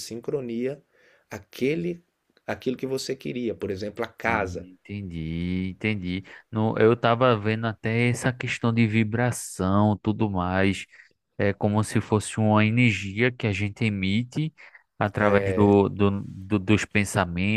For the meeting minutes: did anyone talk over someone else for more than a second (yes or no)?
no